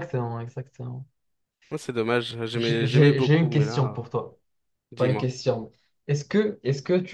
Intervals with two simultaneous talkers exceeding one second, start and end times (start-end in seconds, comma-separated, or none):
2.5-4.0